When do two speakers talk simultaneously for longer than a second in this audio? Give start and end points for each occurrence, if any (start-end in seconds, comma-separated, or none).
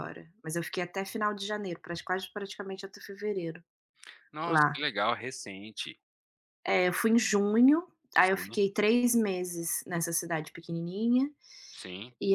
none